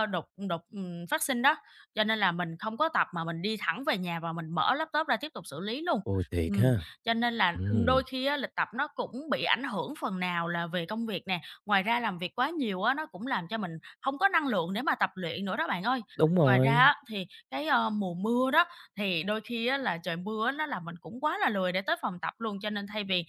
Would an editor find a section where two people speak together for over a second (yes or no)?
no